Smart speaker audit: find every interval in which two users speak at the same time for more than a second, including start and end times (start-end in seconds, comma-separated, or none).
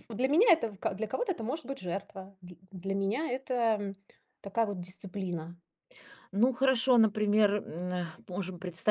none